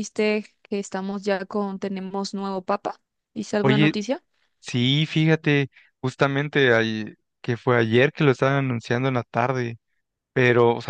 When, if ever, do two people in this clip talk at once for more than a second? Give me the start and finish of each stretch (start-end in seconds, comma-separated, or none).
none